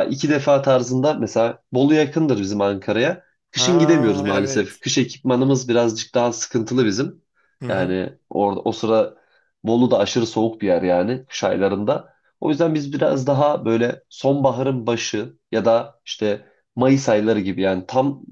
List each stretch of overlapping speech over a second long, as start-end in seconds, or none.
3.5-4.8